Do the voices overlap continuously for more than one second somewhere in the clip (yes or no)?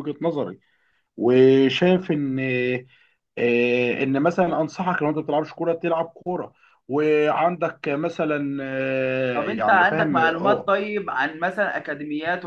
yes